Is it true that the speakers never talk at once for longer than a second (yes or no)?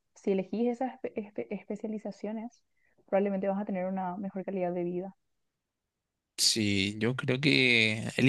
yes